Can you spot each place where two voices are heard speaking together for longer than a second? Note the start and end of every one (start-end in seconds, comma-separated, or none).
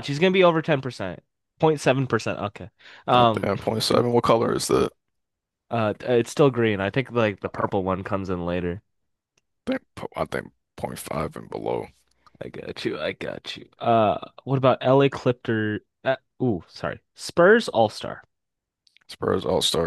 none